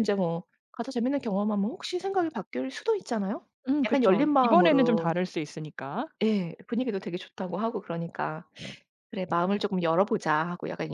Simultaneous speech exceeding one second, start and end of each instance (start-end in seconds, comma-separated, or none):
3.9-5.1